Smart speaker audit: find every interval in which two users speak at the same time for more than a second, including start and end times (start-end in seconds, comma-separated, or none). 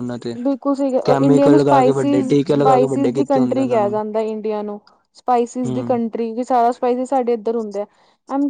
1.1-4.0